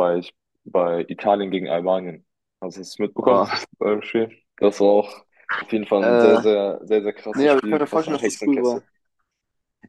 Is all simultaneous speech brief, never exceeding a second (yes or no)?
no